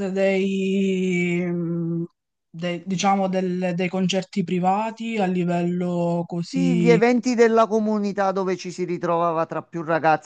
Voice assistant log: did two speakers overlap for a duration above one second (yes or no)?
no